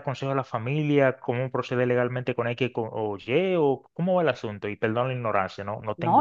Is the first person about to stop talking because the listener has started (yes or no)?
yes